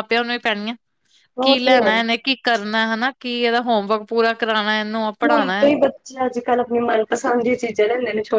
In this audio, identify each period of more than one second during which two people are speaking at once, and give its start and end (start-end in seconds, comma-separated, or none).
none